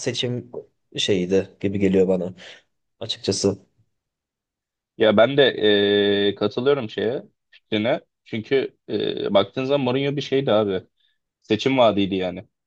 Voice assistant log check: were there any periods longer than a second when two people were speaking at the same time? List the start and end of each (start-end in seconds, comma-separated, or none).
none